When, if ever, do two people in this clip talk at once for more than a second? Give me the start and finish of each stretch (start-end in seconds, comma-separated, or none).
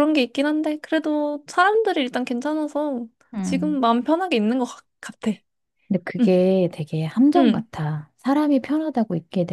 none